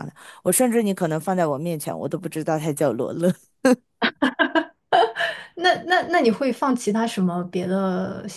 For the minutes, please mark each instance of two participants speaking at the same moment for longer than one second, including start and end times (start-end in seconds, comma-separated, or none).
none